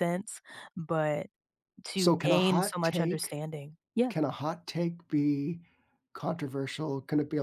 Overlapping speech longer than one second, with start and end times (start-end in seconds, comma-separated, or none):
1.9-3.4